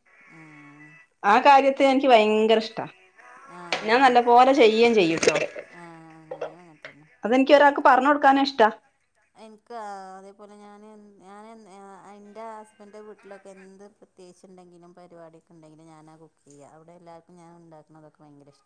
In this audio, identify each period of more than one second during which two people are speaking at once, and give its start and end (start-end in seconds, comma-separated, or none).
none